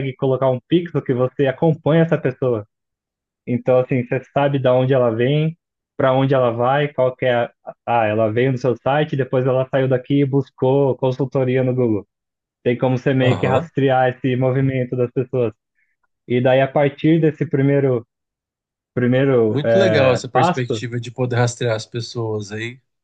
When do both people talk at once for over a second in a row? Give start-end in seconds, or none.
19.5-20.8